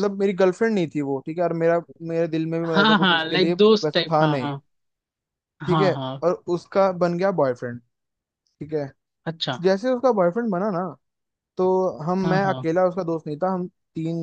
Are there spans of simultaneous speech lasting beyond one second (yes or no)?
yes